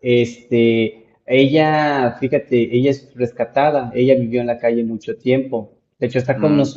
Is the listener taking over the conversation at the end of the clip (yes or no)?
no